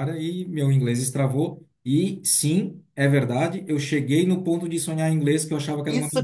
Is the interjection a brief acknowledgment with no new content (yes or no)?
no